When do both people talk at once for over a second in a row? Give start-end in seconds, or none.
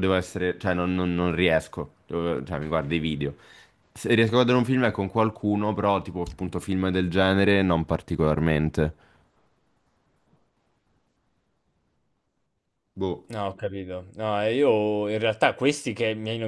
none